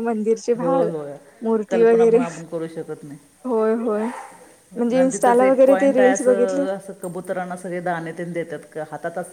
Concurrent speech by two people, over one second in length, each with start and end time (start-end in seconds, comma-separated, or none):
4.9-6.7